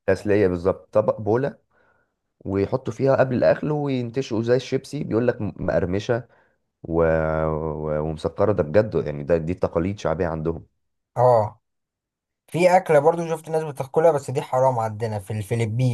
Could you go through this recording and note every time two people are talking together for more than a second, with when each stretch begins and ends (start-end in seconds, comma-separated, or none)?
none